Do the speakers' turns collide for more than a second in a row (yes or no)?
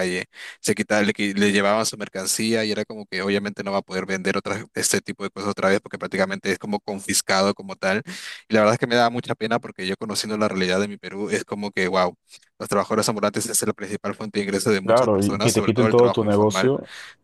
yes